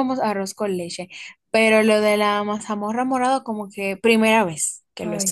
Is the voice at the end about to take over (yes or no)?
yes